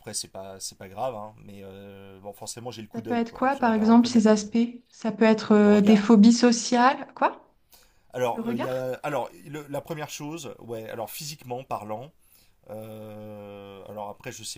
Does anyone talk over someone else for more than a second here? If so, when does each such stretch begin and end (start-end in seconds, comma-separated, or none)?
2.9-4.4